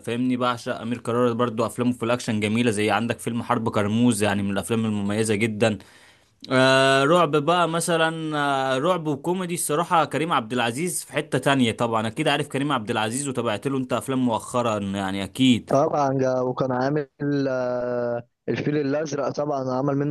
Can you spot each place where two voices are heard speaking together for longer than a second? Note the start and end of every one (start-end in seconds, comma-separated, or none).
none